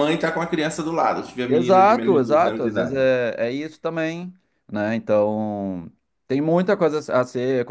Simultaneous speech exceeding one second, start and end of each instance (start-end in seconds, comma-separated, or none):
1.5-3.0